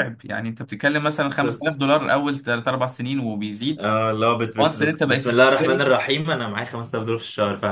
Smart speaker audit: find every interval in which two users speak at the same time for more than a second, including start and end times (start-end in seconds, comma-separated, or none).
4.6-5.9